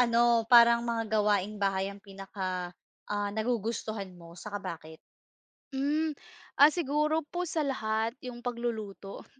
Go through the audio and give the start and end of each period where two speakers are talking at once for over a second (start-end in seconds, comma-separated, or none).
none